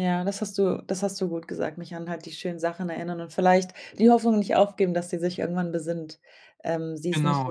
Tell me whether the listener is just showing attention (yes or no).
yes